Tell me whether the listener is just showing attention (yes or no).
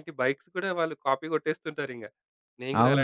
no